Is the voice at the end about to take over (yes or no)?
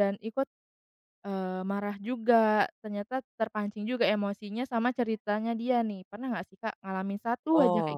yes